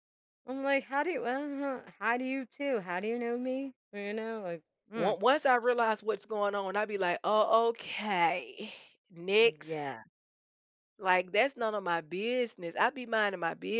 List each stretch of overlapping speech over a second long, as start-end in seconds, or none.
none